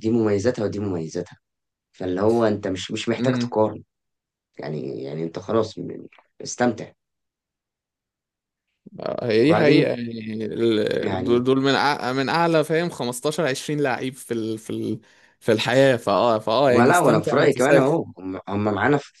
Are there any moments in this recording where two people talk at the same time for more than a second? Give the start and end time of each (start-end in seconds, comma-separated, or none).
16.7-18.0